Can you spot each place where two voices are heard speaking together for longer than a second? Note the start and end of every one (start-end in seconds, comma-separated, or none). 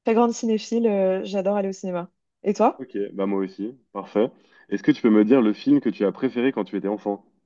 none